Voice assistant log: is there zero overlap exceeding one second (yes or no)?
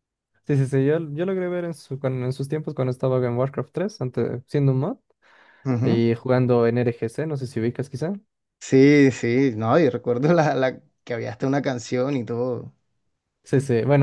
yes